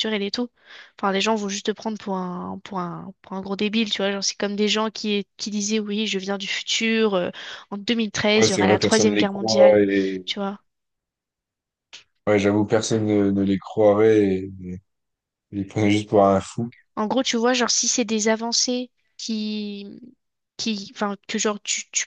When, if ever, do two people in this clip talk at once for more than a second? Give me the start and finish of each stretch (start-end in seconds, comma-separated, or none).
8.3-9.8